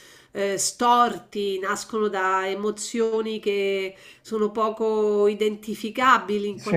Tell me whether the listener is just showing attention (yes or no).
yes